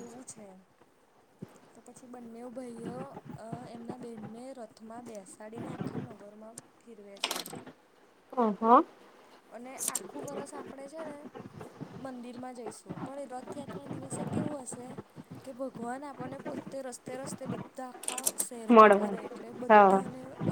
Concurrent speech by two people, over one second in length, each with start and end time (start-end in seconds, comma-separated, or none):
18.7-20.0